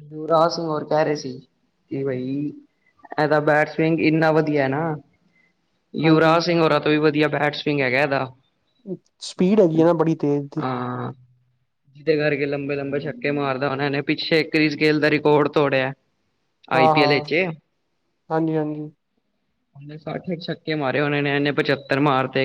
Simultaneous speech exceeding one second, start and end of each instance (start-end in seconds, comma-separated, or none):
none